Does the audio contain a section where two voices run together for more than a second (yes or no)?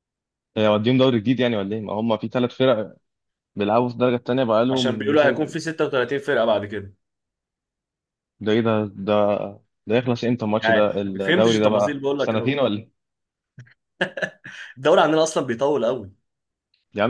yes